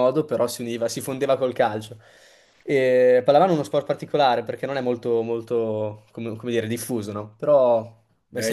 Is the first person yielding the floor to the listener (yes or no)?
yes